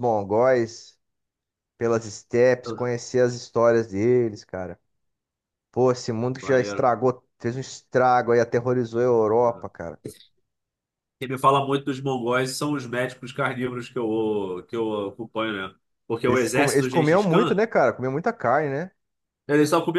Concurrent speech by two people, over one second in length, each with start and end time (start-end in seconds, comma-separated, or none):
16.2-17.6